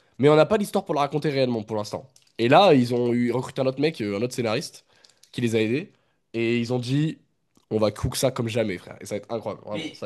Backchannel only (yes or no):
no